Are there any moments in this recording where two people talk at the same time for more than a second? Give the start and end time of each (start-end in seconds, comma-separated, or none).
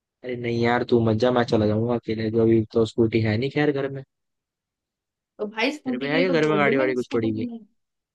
5.8-7.5